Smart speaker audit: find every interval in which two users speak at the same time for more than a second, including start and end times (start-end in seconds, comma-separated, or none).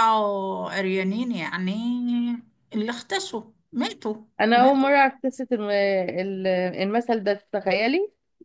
none